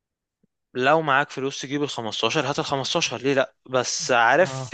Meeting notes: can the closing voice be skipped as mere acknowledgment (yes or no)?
yes